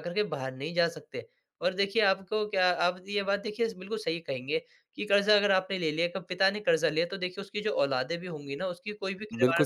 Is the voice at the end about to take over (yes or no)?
yes